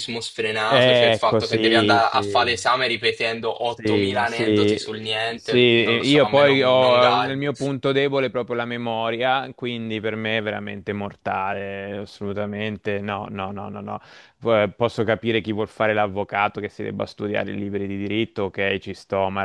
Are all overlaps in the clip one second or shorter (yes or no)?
no